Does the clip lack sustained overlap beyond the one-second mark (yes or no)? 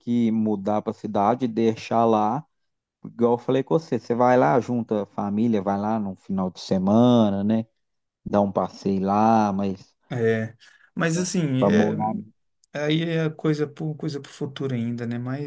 yes